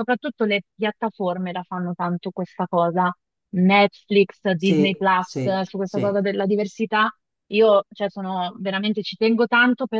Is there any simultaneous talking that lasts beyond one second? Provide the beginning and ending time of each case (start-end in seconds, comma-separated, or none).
4.6-6.2